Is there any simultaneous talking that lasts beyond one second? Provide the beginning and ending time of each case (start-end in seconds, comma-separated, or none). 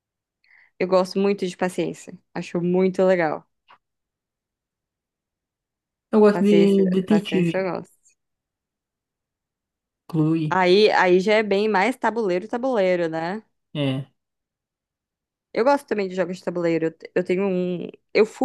6.3-7.7